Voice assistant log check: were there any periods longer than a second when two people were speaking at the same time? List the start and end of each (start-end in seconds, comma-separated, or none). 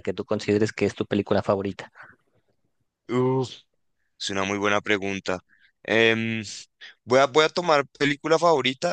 none